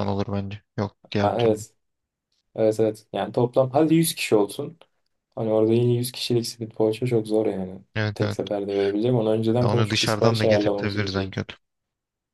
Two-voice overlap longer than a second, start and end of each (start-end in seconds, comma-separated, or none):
9.6-11.3